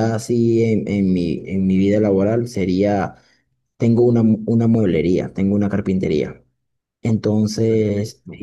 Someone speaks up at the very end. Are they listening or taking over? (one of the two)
listening